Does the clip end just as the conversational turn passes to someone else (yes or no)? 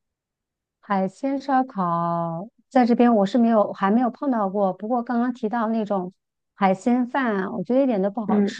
no